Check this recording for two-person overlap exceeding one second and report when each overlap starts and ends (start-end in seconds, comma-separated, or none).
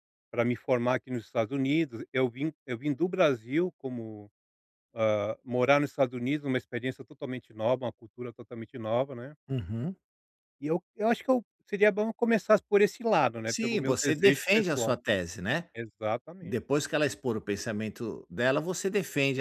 13.4-14.9